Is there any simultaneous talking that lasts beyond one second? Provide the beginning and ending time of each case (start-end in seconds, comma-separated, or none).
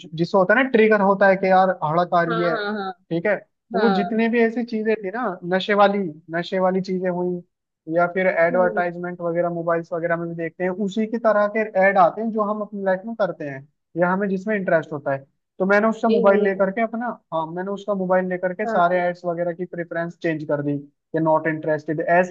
none